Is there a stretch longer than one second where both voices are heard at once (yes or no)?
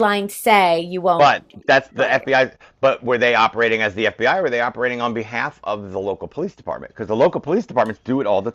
no